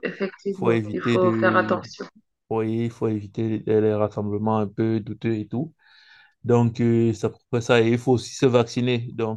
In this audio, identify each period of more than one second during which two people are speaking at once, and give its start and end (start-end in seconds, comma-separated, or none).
0.5-1.8